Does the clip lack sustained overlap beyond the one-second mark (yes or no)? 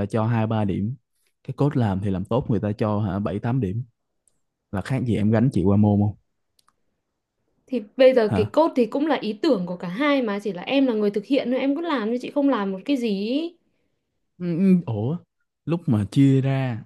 yes